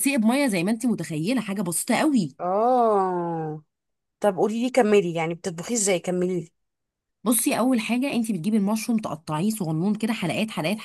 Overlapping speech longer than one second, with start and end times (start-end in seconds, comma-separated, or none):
none